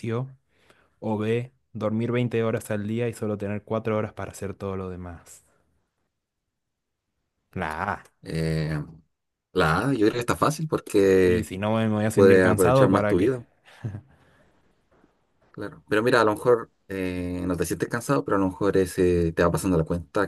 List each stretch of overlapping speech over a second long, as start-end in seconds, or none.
12.1-13.4